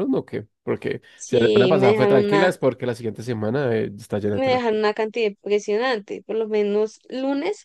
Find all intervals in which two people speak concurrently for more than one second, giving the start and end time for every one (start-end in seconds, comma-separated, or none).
1.1-2.5